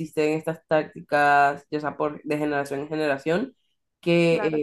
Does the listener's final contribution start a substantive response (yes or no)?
no